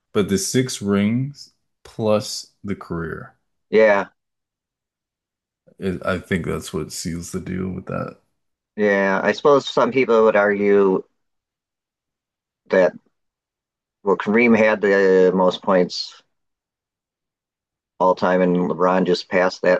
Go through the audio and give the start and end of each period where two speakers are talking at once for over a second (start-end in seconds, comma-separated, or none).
none